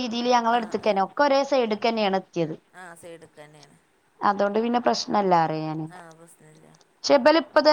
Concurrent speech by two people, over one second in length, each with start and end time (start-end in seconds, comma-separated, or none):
none